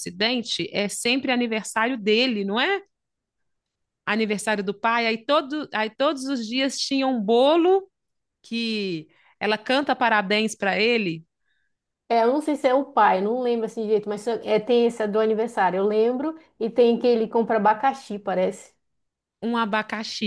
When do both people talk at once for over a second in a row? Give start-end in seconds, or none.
none